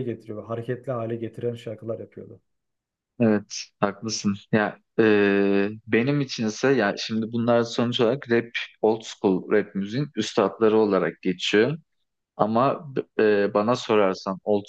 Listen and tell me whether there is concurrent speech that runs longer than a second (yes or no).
no